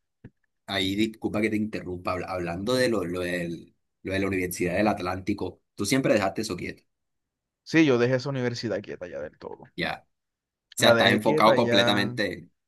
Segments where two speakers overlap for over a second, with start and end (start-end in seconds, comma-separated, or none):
10.8-12.2